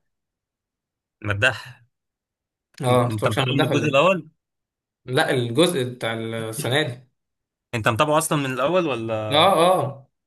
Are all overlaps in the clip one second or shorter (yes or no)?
no